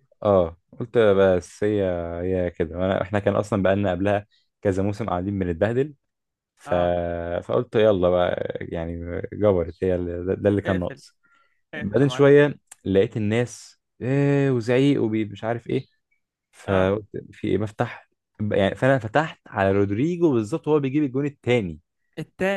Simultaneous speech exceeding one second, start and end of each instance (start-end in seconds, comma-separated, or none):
none